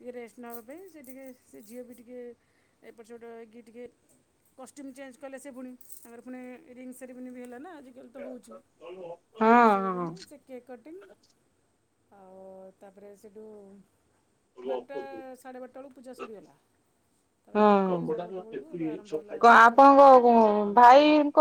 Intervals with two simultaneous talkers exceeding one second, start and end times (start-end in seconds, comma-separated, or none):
17.6-19.9